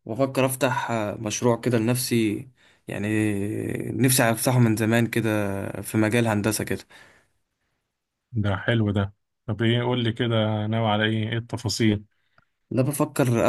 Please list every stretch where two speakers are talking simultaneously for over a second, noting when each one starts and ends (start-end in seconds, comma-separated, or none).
none